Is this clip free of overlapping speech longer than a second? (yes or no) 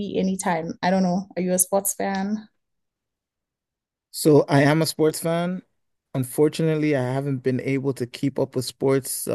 yes